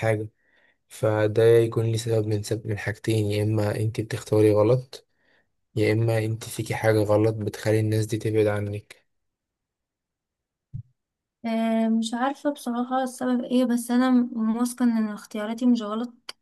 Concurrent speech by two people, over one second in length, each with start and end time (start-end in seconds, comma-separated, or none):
none